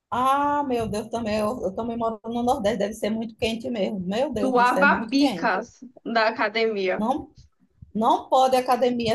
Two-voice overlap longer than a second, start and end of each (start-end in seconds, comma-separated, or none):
4.4-5.6